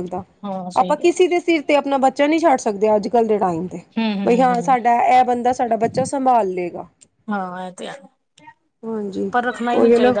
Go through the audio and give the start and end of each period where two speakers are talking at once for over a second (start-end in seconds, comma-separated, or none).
none